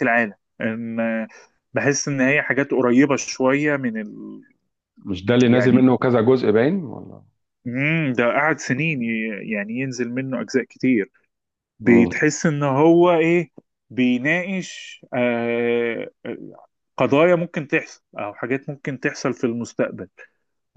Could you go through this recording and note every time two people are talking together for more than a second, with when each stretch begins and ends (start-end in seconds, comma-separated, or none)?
none